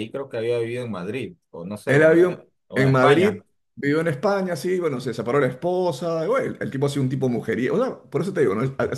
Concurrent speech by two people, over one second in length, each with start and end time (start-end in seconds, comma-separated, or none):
1.9-3.4